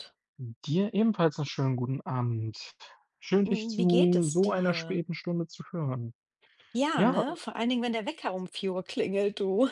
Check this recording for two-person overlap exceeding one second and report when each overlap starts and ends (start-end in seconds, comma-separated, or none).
3.5-5.0